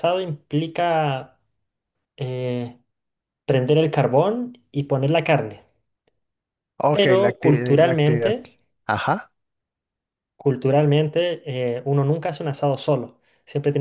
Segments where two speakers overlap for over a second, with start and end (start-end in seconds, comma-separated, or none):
6.9-8.3